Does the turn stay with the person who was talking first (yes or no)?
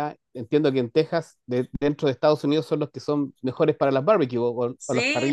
no